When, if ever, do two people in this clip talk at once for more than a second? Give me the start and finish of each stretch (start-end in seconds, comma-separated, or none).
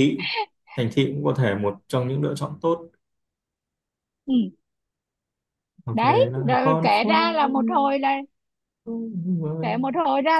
5.9-7.4